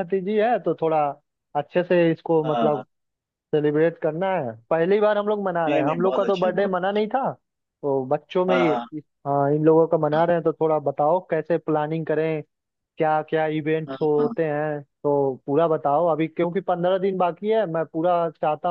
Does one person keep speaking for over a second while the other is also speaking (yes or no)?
yes